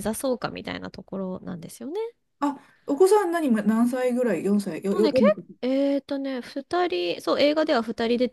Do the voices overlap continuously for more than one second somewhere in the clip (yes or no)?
no